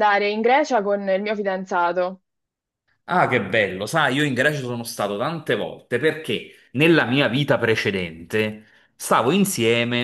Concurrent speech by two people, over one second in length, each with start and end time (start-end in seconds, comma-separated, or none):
none